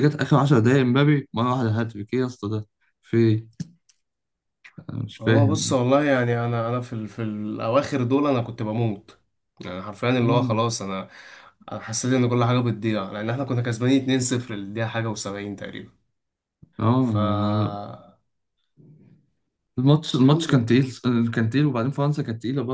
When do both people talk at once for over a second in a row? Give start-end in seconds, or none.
none